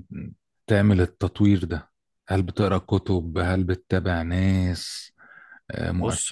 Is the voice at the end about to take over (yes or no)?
yes